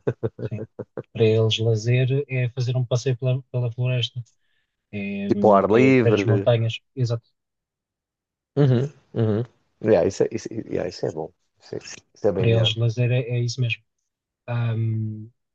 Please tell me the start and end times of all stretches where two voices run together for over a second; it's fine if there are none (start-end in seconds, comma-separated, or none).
5.3-6.5